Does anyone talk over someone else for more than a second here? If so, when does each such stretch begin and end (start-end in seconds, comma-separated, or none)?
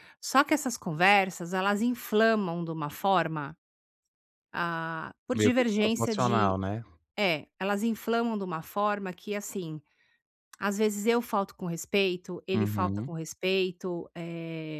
5.3-6.6